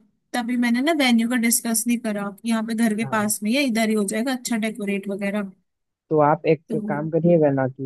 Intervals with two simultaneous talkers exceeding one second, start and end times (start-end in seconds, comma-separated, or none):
none